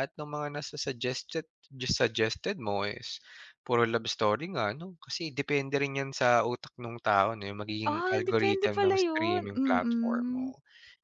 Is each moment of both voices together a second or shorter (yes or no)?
no